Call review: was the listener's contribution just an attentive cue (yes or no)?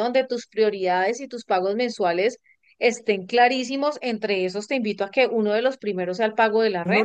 no